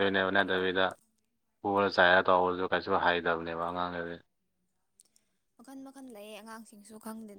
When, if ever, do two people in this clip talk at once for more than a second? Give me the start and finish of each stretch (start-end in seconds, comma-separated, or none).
none